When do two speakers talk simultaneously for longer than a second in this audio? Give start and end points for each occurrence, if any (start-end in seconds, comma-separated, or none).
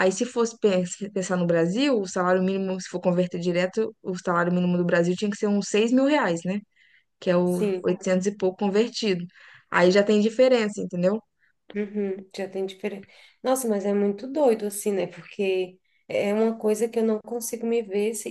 none